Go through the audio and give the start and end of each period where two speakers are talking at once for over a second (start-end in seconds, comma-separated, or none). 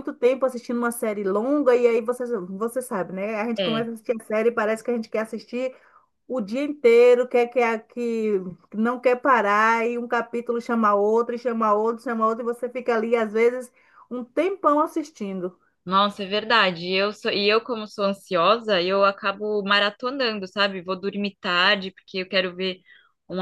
none